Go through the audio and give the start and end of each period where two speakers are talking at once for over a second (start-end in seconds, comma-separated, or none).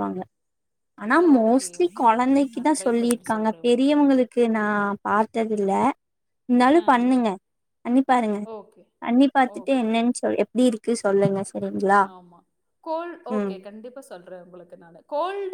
1.3-4.0